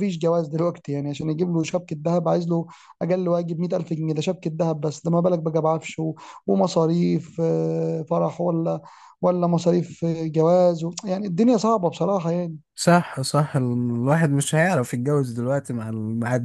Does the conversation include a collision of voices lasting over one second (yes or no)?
no